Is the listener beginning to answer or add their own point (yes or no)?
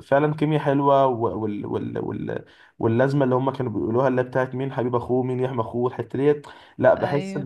no